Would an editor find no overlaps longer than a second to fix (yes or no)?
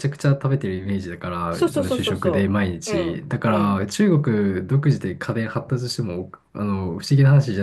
no